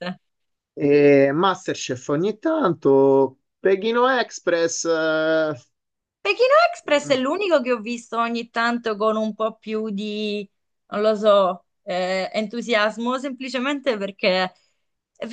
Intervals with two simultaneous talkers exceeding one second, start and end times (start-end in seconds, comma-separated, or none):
none